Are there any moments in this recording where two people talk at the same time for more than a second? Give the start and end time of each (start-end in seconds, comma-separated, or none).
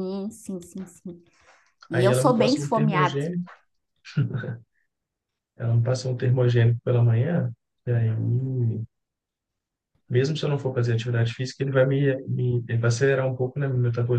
1.9-3.2